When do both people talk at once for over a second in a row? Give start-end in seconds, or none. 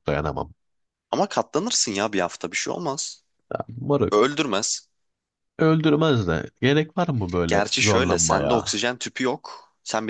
7.5-8.8